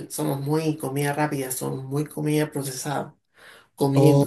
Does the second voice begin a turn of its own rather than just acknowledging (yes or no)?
yes